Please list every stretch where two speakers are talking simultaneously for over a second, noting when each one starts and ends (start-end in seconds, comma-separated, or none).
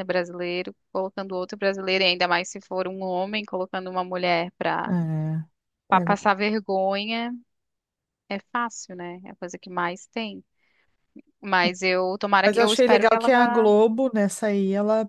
12.4-13.7